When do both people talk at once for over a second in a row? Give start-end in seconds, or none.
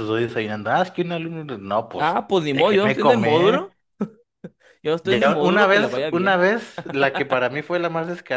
2.0-3.7, 5.0-6.5